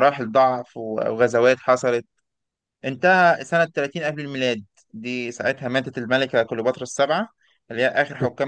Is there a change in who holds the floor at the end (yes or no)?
no